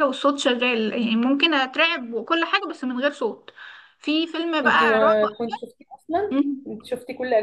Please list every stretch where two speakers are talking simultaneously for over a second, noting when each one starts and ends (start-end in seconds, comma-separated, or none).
none